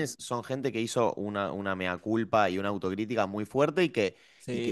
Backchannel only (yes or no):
yes